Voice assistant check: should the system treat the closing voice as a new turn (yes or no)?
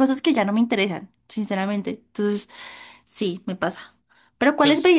no